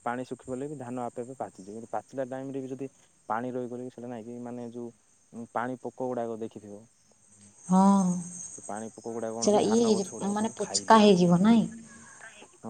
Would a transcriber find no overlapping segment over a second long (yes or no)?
no